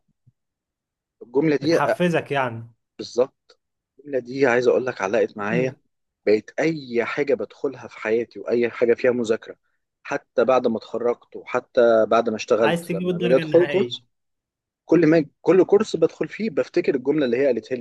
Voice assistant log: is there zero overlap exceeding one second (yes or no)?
no